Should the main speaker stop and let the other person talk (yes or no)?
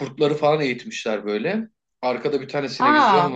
no